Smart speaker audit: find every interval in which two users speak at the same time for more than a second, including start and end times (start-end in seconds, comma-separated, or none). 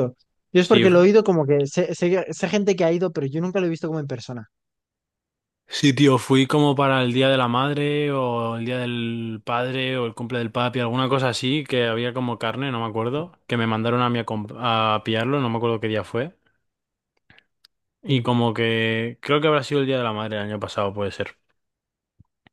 none